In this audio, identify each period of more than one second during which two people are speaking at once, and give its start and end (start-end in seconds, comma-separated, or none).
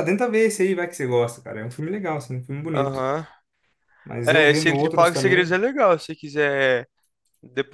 4.2-5.6